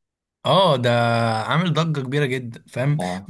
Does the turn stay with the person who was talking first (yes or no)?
yes